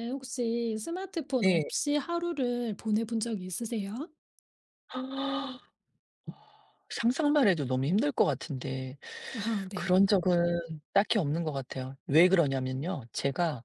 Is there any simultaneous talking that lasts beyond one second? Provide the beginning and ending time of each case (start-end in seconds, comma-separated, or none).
none